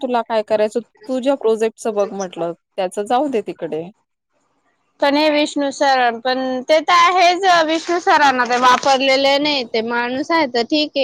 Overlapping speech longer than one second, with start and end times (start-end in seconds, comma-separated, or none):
none